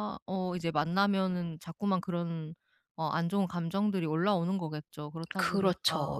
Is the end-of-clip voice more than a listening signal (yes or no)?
yes